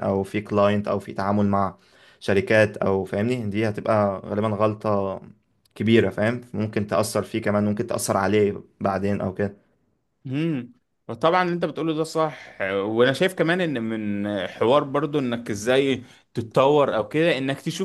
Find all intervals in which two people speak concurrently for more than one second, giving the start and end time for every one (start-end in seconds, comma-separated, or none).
none